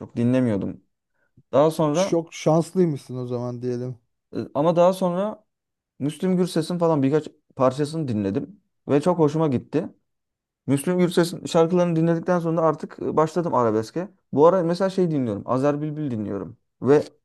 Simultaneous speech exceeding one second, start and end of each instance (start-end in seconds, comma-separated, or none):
none